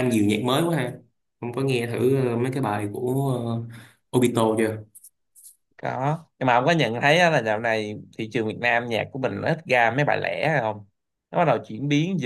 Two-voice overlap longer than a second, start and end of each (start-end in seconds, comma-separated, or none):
none